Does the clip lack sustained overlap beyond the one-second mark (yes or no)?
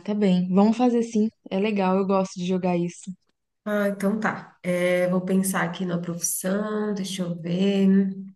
yes